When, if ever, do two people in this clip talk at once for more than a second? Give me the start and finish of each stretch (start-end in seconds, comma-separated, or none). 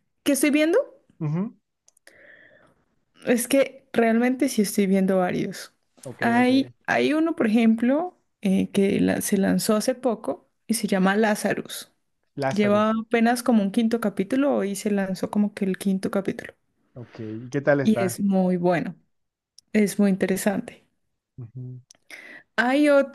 none